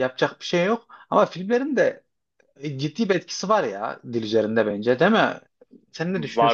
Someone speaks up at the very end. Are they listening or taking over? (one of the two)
taking over